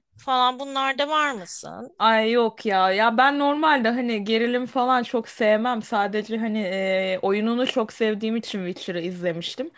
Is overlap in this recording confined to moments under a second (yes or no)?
yes